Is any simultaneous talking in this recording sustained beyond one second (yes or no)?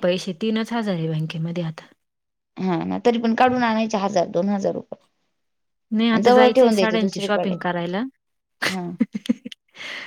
yes